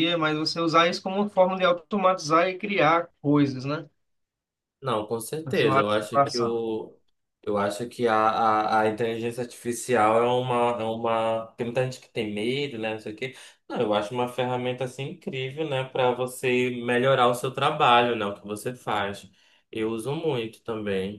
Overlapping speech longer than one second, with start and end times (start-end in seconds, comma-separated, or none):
5.4-6.6